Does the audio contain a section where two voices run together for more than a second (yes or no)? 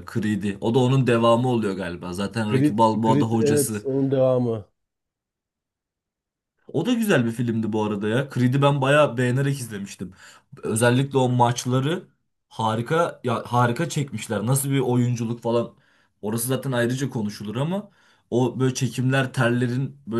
yes